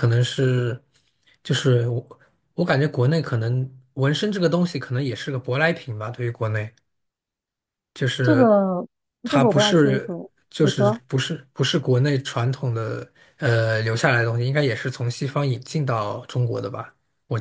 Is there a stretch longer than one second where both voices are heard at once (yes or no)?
yes